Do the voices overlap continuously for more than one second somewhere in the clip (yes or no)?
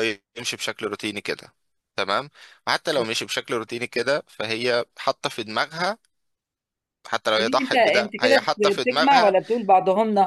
yes